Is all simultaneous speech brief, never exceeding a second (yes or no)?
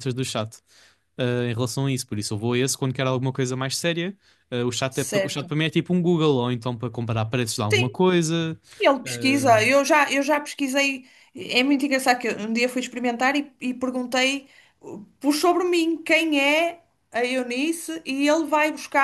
yes